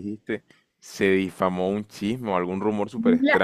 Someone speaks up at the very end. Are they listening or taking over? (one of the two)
taking over